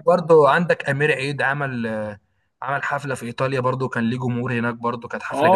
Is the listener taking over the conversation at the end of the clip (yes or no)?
yes